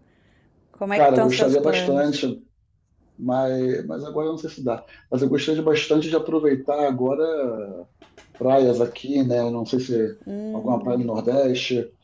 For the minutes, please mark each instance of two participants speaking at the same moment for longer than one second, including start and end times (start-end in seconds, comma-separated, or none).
0.9-2.2